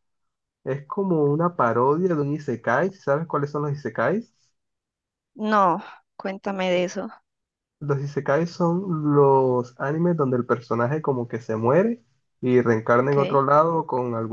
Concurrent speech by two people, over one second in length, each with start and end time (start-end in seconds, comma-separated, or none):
none